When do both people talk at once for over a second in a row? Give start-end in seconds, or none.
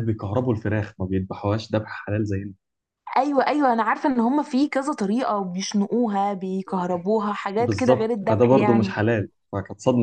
7.6-8.9